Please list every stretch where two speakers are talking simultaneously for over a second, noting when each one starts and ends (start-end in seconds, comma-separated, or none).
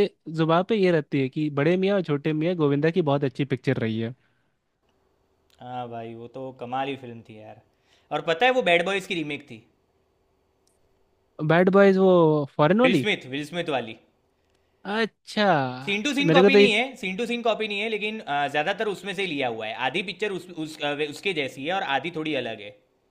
none